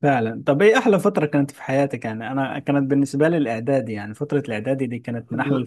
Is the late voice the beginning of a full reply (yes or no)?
yes